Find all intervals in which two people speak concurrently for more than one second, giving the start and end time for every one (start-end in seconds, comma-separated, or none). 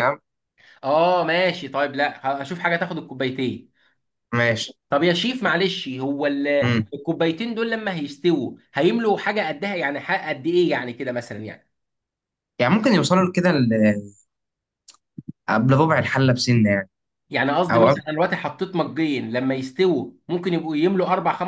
none